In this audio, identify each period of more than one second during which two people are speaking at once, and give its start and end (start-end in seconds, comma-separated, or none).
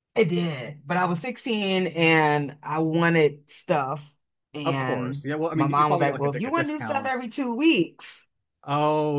4.6-7.2